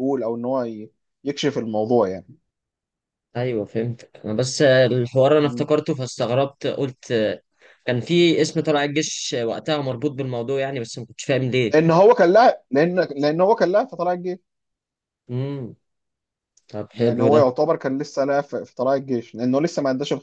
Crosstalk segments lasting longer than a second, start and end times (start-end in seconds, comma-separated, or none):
none